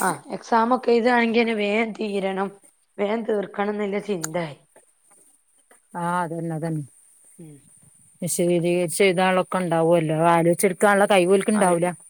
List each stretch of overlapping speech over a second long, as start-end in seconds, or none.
none